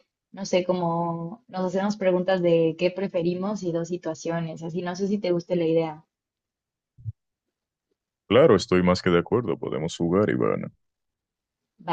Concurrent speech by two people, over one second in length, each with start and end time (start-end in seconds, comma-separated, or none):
none